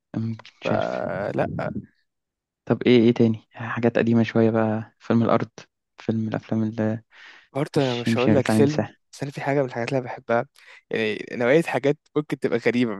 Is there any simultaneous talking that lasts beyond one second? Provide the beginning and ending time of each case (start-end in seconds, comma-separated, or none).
7.8-9.0